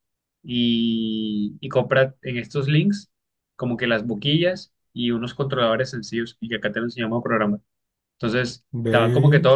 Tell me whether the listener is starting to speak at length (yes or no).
no